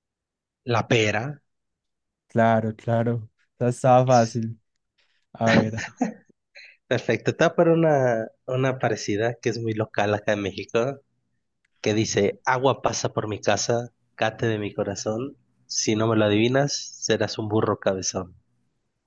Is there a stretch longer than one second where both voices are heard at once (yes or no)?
no